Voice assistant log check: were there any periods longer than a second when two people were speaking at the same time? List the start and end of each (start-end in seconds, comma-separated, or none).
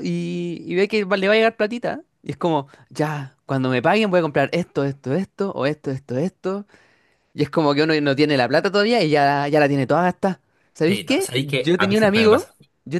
10.9-12.5